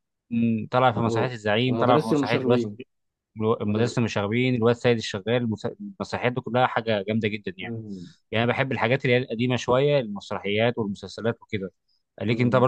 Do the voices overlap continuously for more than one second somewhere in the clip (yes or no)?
yes